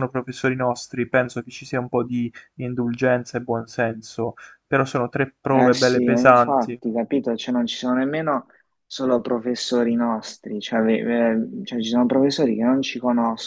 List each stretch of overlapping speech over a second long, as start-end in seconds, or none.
5.5-6.8